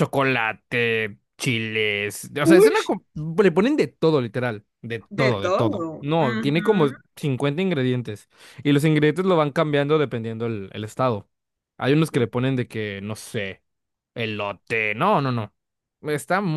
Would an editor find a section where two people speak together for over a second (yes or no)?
yes